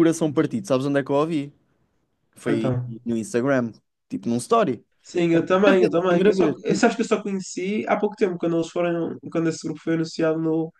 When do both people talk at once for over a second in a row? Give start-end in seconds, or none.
5.3-6.9